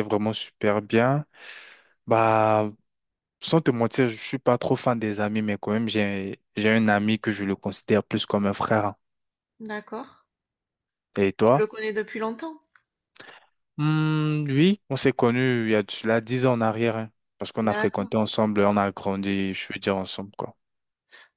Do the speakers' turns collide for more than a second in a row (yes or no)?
no